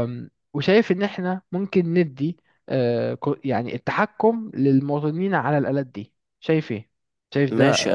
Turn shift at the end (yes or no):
yes